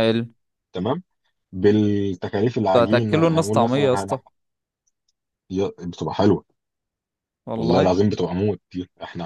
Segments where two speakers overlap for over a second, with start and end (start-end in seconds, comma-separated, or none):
2.8-4.2